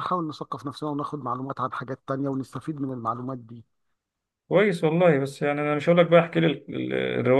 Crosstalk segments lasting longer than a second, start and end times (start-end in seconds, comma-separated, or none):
none